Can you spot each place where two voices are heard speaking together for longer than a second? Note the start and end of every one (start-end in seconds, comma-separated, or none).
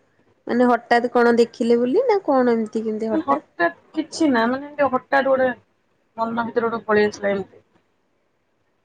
none